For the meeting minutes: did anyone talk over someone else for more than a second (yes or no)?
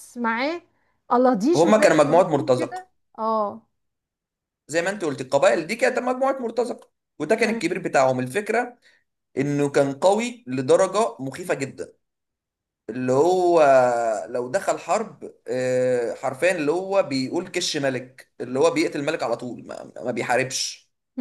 yes